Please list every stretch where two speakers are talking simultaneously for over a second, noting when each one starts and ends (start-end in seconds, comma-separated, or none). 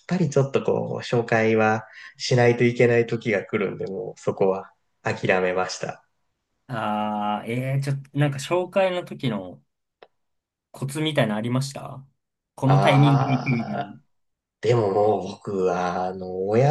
12.6-14.0